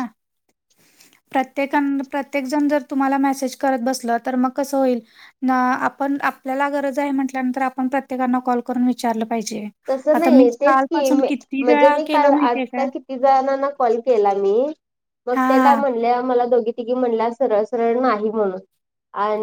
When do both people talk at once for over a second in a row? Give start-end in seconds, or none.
10.1-12.9